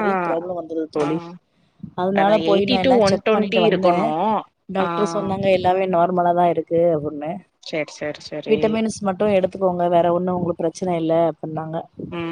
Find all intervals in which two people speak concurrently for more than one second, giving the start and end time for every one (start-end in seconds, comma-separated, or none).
2.2-4.1